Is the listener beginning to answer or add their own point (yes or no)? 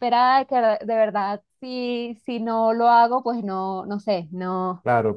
yes